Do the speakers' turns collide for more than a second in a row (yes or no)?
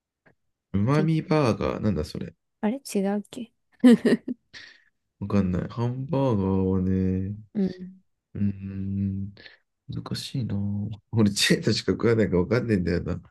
no